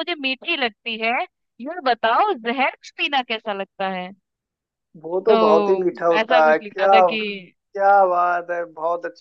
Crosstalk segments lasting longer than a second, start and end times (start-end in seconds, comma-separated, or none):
5.3-6.9